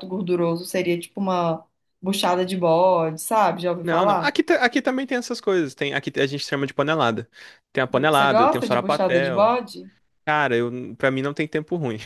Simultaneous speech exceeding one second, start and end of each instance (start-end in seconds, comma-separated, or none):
7.9-9.6